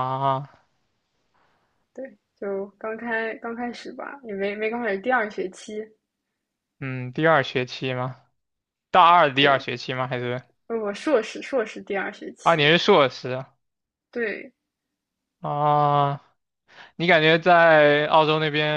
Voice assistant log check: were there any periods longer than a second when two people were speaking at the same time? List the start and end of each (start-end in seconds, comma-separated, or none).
none